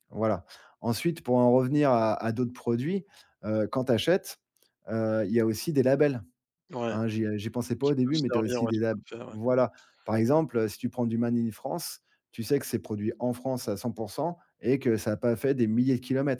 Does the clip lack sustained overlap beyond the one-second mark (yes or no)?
no